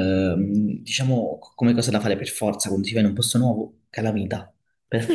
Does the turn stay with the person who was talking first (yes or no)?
no